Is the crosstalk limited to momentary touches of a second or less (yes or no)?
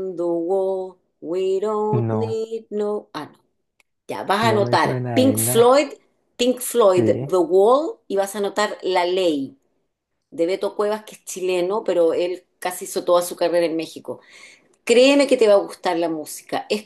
no